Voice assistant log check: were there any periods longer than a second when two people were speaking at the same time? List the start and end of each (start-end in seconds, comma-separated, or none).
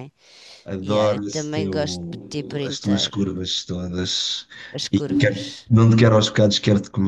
0.8-3.2